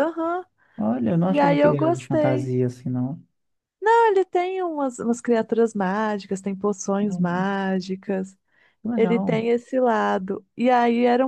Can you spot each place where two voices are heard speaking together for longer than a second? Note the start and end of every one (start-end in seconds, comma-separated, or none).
1.3-2.5